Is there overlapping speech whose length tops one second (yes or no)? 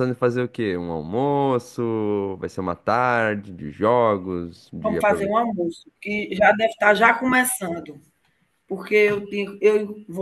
no